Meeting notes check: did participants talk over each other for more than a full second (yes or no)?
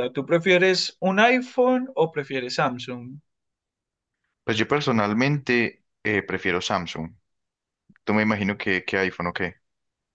no